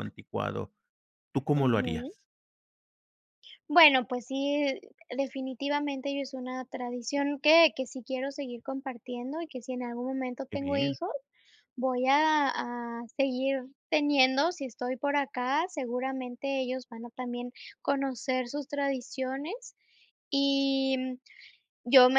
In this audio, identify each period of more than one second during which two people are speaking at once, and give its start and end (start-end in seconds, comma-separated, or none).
none